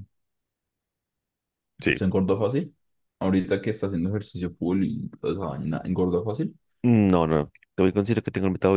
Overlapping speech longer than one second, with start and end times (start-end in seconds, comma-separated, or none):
none